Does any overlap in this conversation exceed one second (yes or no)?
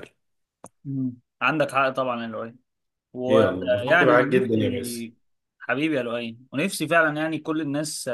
yes